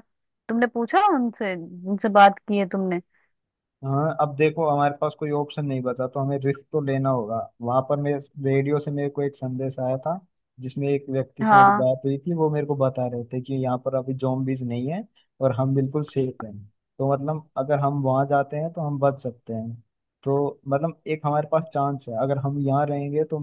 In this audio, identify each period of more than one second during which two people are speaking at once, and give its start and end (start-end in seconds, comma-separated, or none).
none